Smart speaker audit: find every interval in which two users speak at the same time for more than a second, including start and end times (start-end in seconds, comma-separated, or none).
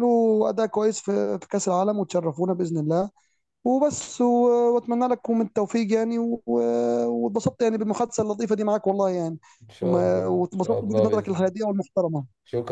9.8-11.4